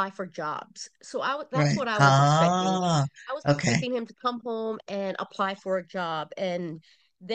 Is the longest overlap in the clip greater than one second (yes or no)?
yes